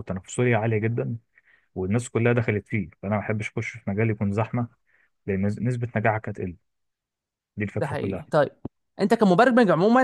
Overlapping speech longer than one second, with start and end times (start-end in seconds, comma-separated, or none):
none